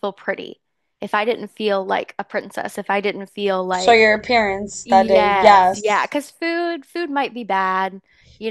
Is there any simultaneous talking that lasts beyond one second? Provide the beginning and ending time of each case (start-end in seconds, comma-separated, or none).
4.8-6.1